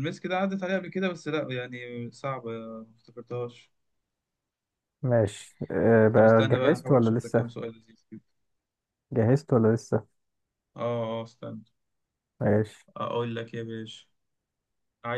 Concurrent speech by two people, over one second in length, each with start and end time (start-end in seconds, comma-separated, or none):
6.1-7.5